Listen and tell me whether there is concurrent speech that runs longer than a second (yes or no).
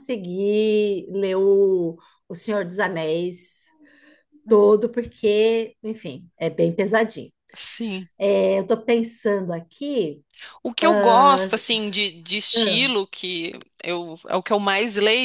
no